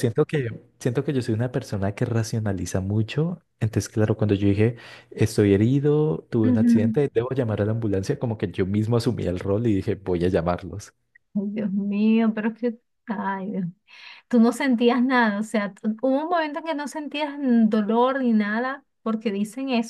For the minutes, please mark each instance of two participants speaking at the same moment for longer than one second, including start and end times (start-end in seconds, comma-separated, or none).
none